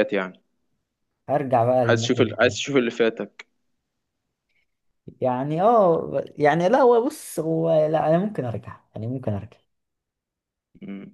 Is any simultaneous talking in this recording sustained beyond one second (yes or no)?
no